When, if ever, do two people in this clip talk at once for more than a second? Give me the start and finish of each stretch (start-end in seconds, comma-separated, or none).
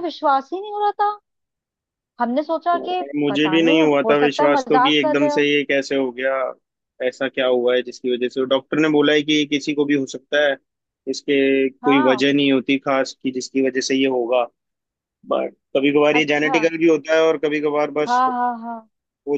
2.7-5.5